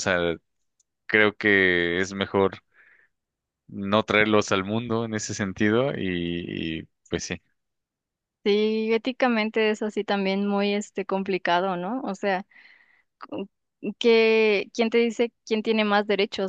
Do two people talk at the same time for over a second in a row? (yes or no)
no